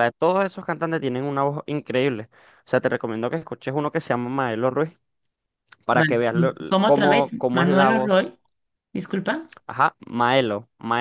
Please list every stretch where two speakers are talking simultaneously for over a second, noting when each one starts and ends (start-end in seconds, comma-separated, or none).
5.9-8.3